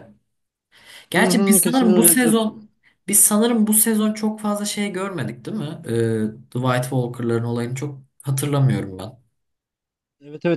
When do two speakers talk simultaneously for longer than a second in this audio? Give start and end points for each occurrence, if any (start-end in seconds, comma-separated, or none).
1.1-2.5